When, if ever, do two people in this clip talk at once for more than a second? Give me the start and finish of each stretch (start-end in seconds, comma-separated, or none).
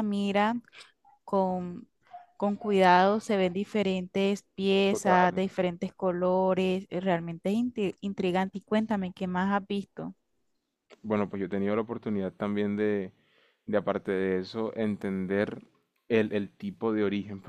none